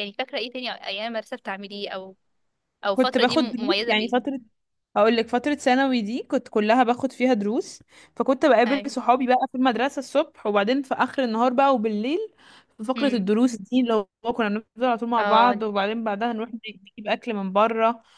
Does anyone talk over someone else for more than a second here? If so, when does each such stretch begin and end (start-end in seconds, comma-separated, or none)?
2.9-4.3